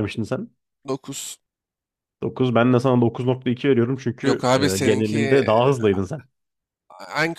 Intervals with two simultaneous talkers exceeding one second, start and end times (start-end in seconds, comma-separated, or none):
4.2-5.7